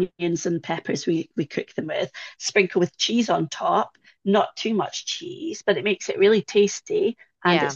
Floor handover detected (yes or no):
no